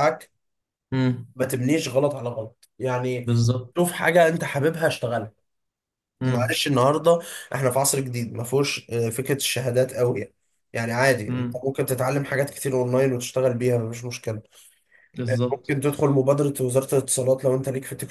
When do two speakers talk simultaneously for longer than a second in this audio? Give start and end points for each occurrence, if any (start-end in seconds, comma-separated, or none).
none